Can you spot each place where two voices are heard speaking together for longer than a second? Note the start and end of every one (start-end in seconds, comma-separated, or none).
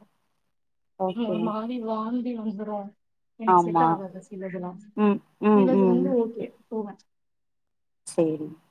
none